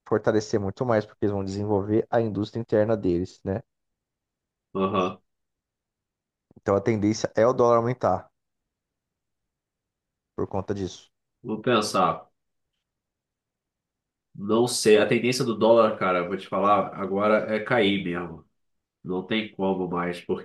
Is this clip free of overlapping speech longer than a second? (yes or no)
yes